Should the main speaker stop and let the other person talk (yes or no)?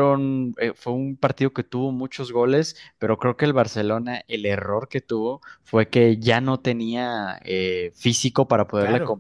no